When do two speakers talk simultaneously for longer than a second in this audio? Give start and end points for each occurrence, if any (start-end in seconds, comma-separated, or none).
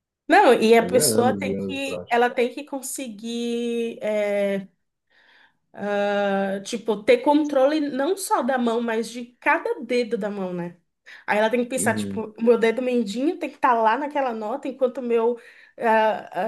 0.8-2.2